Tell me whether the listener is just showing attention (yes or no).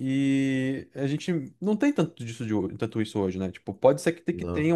yes